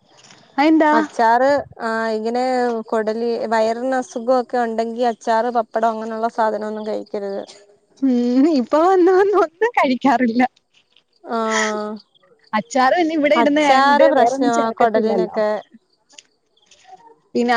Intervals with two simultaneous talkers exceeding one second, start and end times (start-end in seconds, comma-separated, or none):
13.4-15.4